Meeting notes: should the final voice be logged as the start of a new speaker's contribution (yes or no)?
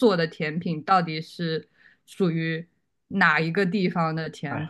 yes